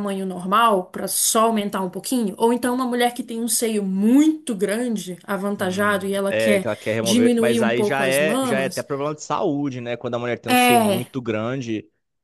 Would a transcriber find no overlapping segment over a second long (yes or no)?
no